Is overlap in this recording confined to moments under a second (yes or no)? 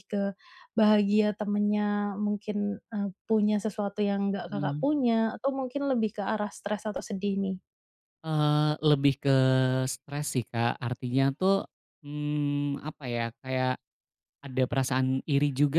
yes